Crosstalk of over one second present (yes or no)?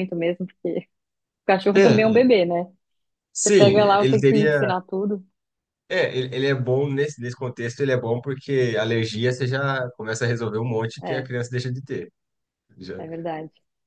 yes